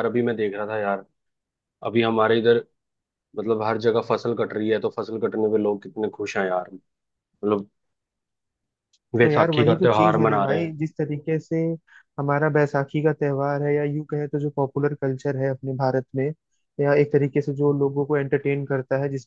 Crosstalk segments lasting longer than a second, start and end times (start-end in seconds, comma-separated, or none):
9.2-10.7